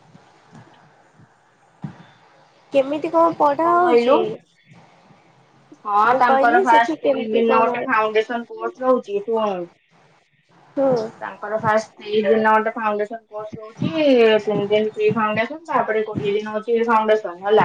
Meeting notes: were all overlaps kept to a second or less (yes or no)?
no